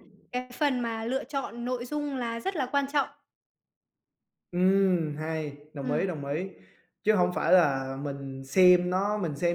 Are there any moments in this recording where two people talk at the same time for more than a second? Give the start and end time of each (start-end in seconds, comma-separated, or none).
none